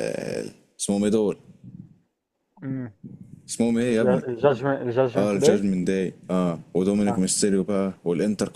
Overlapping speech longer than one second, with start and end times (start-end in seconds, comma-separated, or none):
none